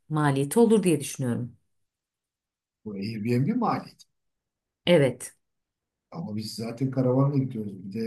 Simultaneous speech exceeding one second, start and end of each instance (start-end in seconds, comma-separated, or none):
none